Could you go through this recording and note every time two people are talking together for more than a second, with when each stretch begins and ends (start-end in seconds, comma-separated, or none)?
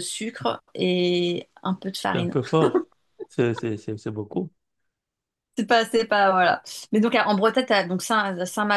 none